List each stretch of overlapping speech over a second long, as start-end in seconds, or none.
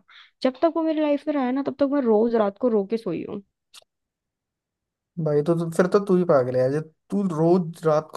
none